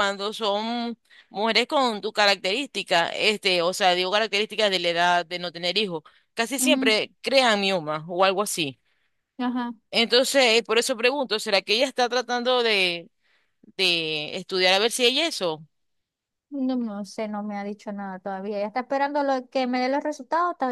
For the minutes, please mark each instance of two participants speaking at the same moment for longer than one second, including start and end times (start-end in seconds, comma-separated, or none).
none